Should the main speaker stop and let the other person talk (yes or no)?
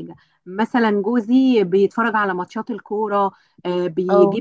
no